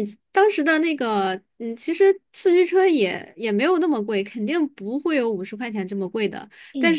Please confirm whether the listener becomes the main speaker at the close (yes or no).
no